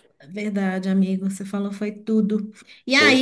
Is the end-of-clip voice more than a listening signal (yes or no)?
no